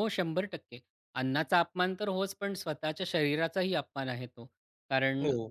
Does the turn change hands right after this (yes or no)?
no